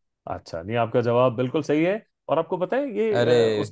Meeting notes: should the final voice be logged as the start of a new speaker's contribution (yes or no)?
no